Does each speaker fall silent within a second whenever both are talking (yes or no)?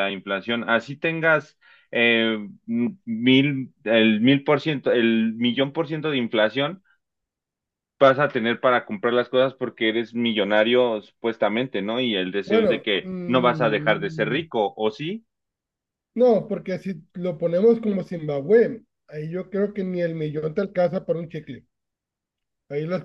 no